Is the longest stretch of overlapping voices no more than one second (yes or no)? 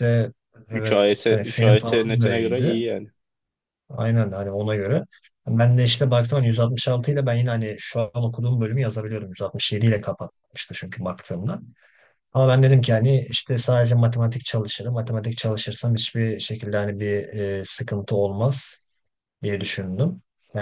no